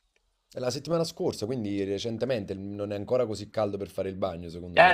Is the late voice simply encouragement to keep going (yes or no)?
no